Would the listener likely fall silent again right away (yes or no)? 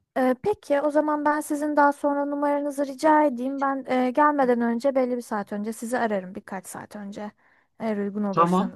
no